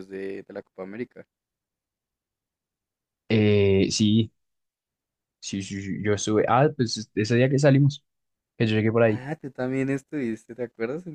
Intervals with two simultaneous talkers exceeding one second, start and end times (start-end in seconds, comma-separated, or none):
none